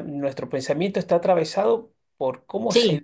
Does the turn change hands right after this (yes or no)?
no